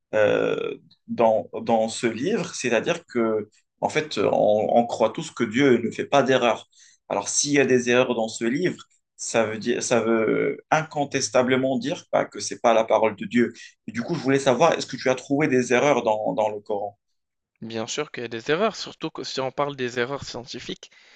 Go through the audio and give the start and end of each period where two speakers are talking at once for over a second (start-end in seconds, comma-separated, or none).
none